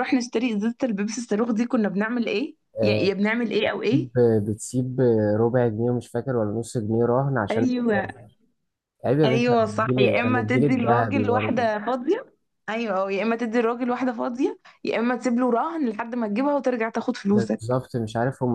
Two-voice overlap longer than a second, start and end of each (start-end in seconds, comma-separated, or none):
9.2-11.7